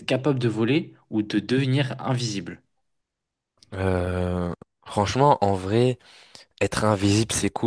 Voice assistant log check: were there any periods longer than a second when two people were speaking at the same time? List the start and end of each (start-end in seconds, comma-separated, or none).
none